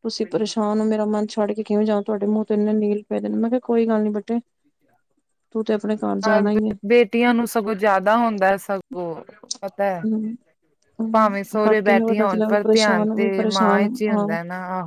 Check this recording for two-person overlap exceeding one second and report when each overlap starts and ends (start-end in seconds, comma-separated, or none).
11.1-14.3